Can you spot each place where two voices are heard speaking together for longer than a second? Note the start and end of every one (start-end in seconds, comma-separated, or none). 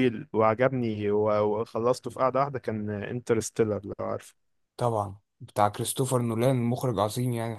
none